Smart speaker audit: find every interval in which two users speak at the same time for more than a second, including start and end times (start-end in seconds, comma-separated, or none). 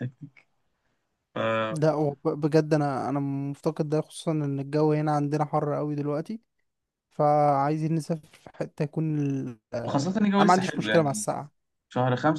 9.8-11.3